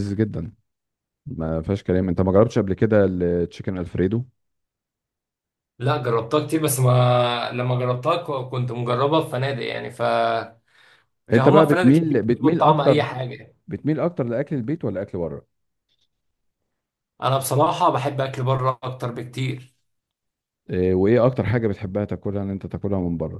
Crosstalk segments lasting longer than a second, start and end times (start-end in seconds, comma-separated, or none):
11.3-13.0